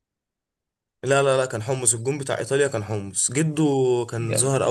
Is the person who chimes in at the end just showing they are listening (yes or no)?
yes